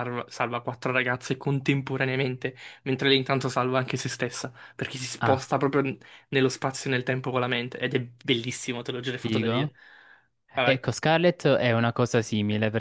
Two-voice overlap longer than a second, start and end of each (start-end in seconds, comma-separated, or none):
none